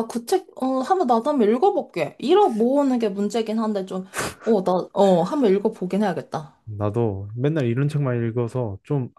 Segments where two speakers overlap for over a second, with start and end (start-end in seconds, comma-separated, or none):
none